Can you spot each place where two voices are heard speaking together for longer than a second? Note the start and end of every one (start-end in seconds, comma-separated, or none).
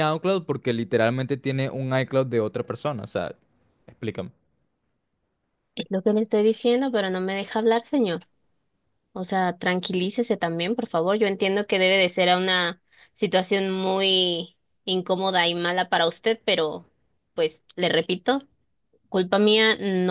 none